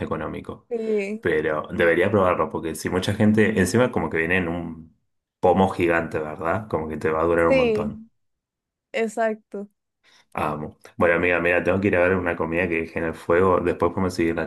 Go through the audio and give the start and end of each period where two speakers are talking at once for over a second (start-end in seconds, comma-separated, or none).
none